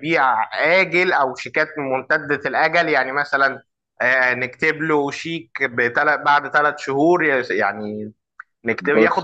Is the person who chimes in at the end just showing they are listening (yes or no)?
yes